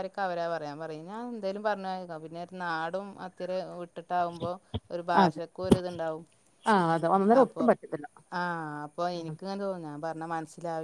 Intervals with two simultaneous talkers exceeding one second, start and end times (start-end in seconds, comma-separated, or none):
none